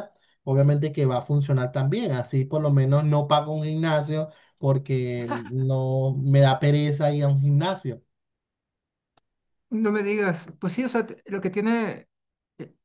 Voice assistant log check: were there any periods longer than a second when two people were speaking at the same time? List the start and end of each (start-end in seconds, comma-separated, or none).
none